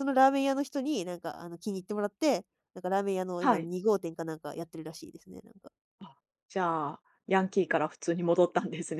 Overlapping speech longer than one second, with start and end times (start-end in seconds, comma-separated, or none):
none